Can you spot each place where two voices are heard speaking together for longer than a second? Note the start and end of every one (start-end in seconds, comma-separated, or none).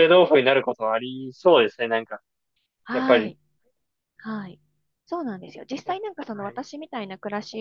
none